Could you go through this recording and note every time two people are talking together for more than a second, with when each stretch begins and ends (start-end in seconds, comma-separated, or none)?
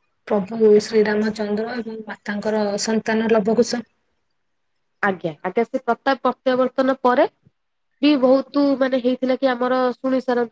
none